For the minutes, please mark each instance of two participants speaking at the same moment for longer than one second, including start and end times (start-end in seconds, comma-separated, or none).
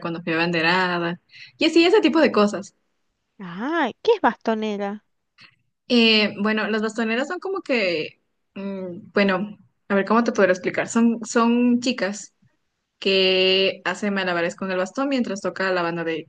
none